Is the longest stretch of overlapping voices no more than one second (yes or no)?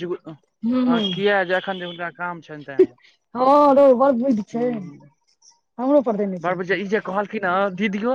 yes